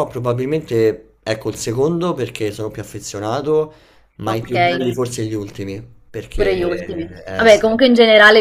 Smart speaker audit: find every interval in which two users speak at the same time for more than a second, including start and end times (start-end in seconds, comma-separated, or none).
6.3-7.8